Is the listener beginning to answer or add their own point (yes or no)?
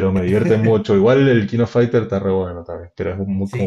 yes